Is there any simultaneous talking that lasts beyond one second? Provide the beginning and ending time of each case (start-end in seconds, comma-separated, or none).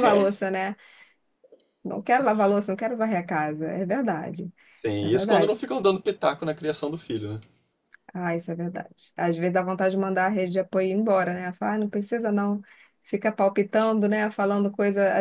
none